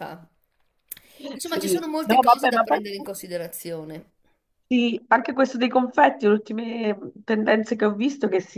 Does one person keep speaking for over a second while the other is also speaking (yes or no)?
yes